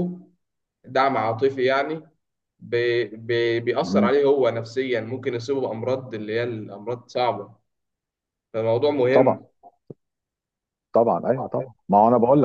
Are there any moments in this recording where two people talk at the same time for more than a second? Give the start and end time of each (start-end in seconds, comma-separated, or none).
none